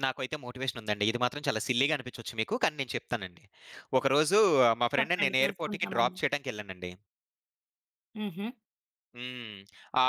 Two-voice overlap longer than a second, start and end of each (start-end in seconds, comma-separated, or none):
5.0-6.2